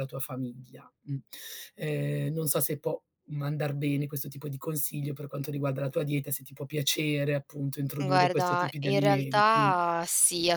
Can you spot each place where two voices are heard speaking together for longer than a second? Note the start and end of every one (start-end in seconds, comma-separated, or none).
8.0-9.8